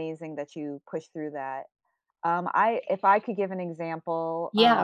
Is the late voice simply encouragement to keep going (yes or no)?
no